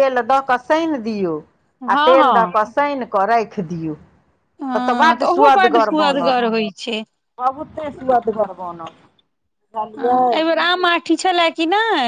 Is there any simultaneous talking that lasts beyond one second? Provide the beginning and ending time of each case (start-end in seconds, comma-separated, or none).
4.8-6.4